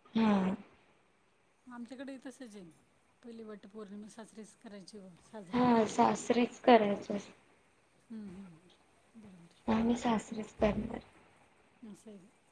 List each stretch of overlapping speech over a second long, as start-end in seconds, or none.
none